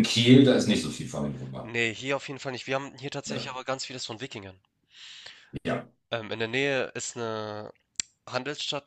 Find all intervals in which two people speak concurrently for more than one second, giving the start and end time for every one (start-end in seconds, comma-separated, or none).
none